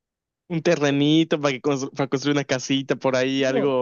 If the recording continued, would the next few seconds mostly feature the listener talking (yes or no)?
yes